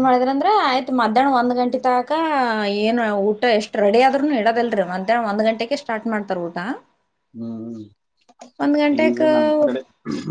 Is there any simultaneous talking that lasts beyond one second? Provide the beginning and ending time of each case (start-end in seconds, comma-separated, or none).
none